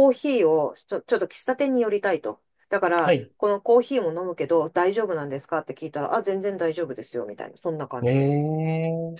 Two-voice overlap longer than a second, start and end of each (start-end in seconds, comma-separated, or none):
none